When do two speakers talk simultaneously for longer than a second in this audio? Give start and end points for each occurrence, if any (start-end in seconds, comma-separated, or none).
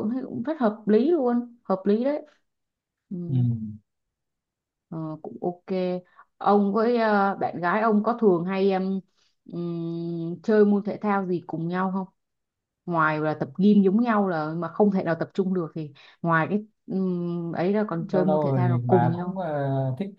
18.1-19.4